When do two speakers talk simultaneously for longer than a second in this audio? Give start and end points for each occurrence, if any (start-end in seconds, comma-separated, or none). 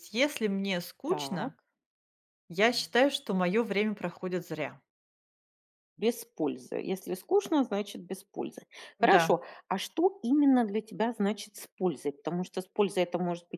none